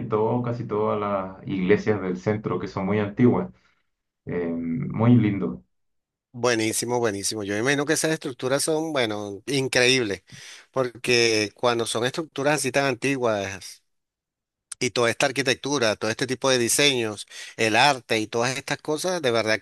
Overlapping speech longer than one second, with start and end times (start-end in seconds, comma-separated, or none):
none